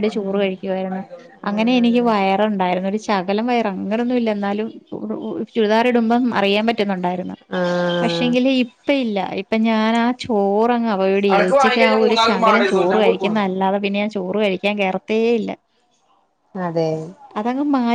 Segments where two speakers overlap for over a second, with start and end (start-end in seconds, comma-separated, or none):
11.3-13.5